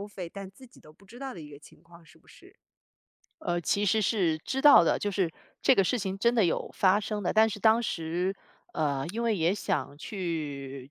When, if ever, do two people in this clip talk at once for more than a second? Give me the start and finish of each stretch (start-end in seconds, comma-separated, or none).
none